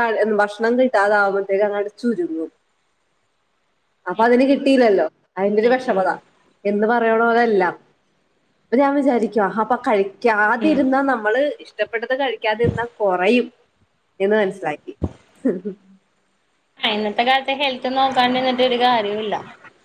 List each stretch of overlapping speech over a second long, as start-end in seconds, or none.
none